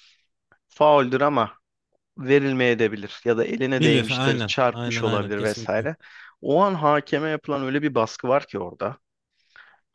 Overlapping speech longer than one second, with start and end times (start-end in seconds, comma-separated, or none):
3.7-5.9